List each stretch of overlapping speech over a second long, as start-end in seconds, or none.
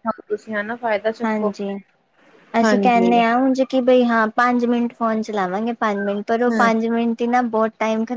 none